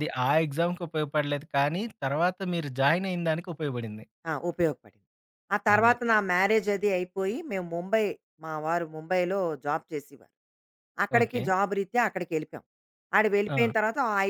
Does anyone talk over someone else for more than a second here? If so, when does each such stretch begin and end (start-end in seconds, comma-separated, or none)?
none